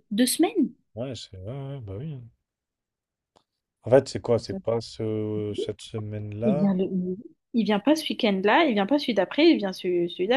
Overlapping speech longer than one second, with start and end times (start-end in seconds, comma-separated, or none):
none